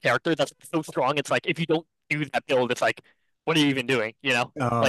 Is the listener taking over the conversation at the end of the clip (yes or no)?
yes